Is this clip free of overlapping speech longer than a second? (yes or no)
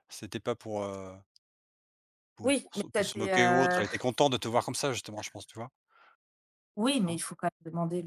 no